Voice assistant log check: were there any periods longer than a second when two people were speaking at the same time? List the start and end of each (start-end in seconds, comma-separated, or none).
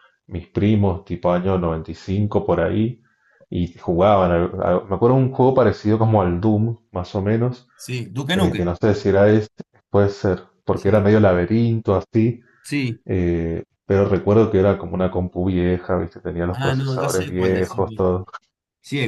16.5-17.8